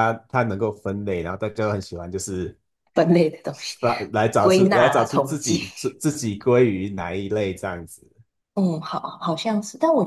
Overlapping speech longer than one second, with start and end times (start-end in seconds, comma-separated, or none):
4.4-5.6